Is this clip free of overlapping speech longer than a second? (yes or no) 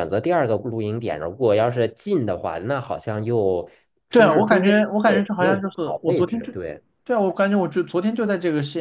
no